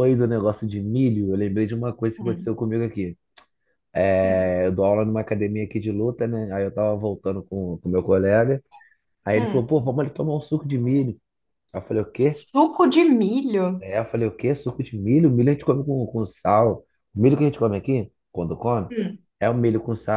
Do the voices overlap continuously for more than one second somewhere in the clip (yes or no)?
no